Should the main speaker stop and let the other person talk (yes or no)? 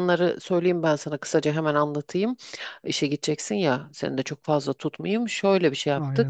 no